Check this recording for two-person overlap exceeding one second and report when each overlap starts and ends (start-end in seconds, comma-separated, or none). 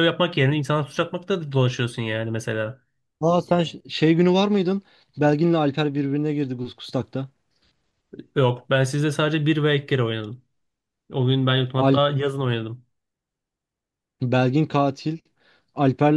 none